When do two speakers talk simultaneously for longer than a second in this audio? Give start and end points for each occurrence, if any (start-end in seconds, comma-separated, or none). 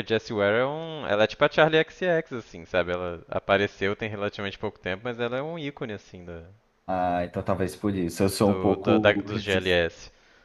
8.4-9.8